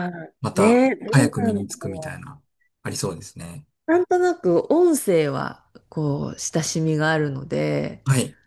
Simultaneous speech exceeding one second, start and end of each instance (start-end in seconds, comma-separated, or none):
0.5-2.2